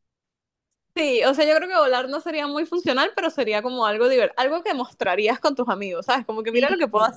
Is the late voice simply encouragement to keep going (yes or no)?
no